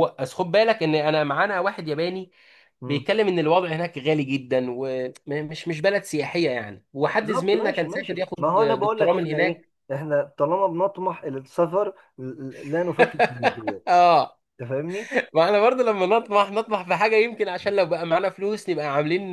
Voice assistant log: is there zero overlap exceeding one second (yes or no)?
no